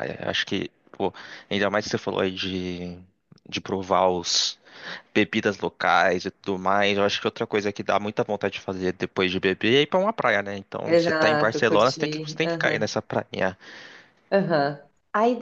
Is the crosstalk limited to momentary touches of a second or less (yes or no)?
no